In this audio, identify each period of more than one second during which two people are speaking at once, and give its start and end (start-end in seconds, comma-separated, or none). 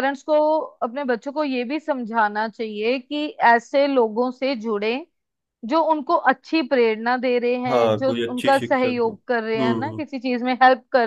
7.7-10.0